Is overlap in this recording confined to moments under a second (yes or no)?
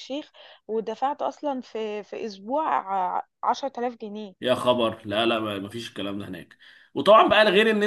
yes